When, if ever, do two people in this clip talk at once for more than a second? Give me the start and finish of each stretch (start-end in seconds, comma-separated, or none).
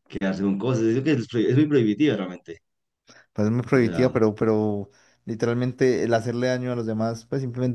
none